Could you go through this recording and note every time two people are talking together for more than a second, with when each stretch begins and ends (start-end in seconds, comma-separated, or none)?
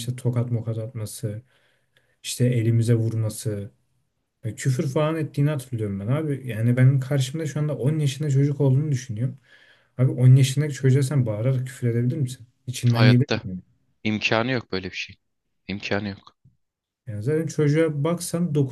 none